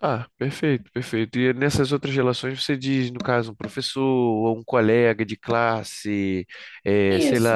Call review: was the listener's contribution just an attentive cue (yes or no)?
yes